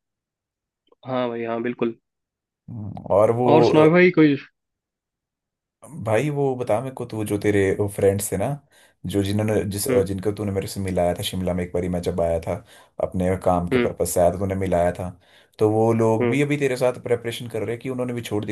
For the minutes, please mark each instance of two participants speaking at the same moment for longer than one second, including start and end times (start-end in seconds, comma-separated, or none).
none